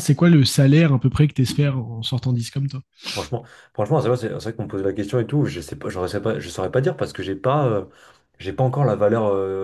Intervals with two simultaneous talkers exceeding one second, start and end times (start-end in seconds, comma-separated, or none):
none